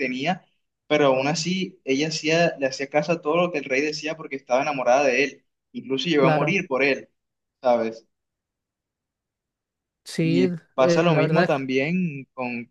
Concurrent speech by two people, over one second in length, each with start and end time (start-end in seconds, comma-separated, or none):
10.2-11.6